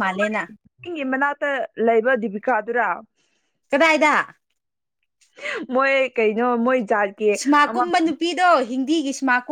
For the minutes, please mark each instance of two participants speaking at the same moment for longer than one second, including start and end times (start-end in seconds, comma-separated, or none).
none